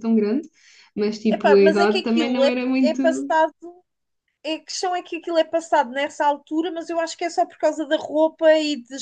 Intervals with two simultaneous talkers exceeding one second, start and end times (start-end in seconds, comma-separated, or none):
1.3-3.0